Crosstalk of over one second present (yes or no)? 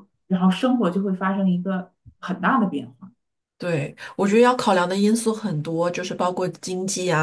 no